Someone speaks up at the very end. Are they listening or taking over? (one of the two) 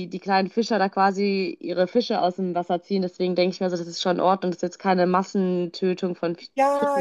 taking over